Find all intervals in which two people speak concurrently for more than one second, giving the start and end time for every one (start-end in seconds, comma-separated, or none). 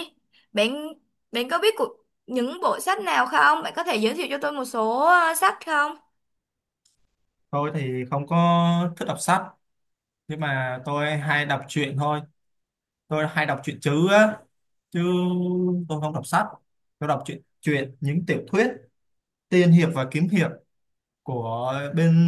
none